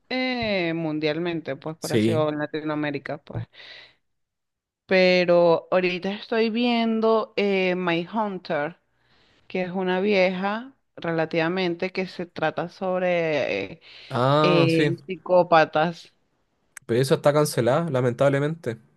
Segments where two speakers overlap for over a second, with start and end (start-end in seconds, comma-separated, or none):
none